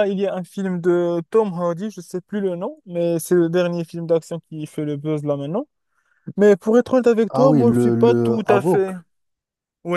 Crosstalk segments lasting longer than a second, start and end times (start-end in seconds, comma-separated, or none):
7.3-8.9